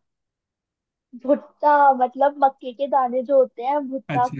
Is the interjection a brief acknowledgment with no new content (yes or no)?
no